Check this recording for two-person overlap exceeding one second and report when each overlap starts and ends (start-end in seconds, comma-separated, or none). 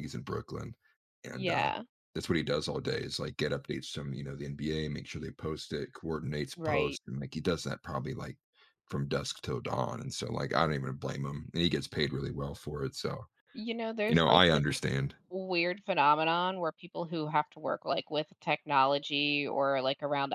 none